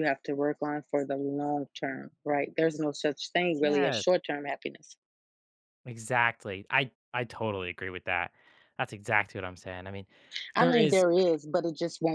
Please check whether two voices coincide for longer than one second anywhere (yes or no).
no